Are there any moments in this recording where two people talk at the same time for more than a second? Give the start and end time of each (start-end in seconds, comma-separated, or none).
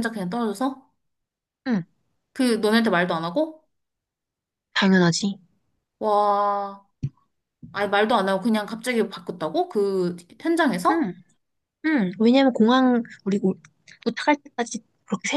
none